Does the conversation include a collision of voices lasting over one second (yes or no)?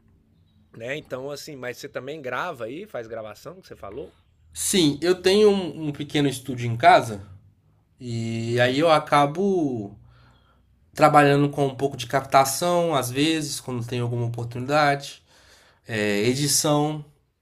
no